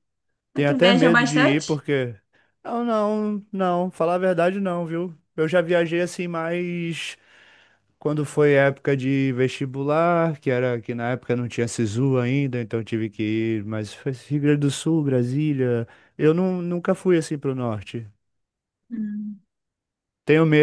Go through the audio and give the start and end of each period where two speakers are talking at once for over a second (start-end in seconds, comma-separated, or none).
0.5-1.8